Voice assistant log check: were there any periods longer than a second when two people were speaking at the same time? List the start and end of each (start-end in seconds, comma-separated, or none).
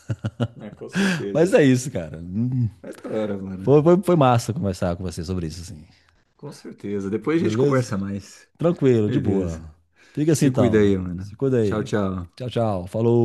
10.3-11.9